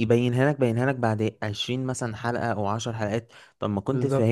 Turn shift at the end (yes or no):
no